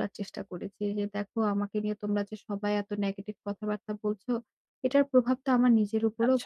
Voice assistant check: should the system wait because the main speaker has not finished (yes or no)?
yes